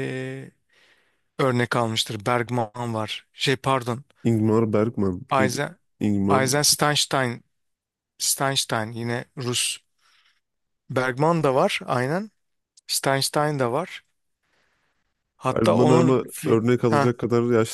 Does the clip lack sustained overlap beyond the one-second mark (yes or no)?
no